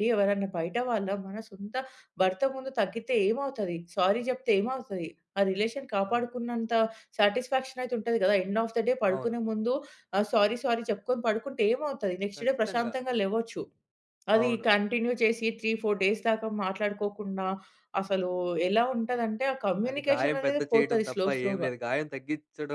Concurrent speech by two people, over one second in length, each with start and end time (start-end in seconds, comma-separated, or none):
19.9-21.7